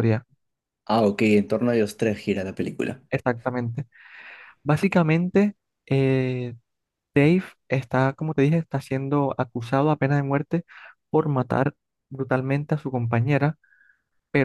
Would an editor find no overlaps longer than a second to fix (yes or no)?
yes